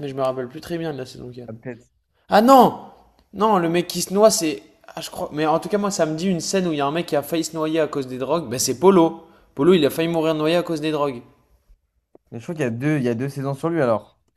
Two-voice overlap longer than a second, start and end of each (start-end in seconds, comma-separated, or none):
none